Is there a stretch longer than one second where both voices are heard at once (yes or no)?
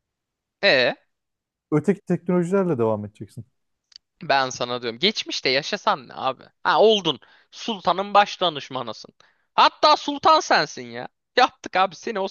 no